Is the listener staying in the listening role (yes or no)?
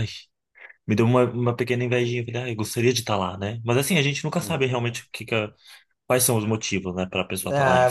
no